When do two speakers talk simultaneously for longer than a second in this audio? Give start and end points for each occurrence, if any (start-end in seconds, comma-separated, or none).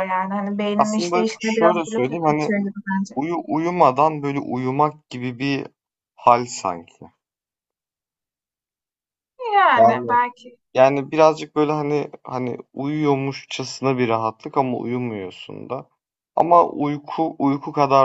0.8-2.5